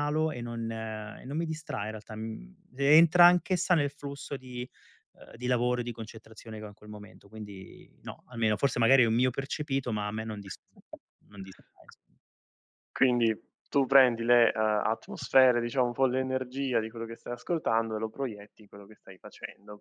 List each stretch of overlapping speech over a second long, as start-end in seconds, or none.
none